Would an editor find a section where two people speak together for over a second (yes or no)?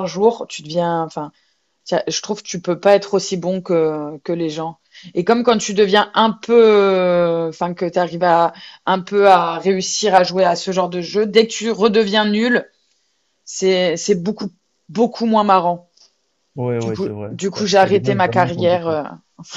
yes